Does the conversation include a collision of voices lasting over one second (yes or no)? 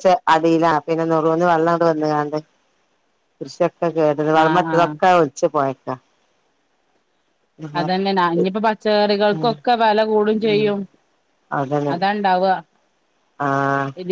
no